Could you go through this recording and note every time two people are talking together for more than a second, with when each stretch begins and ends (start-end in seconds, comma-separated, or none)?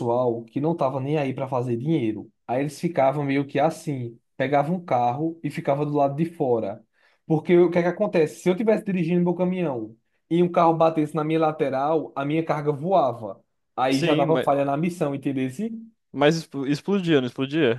none